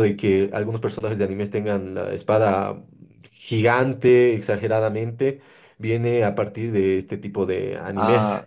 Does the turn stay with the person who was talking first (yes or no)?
no